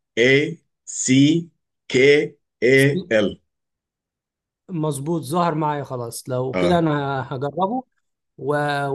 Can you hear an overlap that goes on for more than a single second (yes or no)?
no